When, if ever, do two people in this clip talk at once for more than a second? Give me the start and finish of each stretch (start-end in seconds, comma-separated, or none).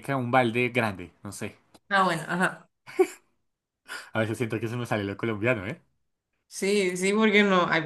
none